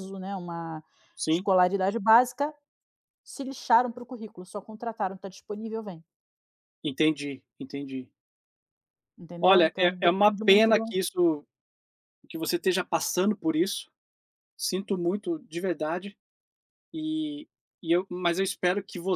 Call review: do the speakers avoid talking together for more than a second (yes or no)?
no